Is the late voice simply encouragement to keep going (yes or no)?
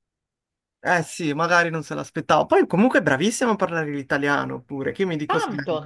no